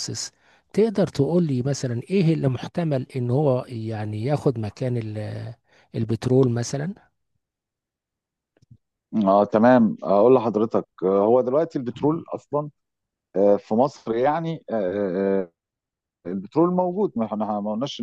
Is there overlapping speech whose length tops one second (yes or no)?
no